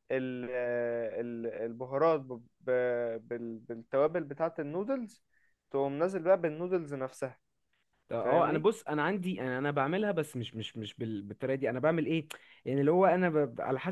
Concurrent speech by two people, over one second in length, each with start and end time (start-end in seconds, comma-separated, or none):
none